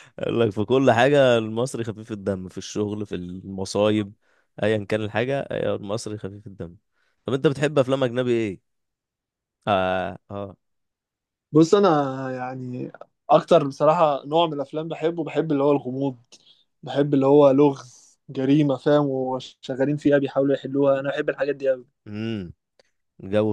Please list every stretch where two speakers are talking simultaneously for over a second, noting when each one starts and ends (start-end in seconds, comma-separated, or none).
none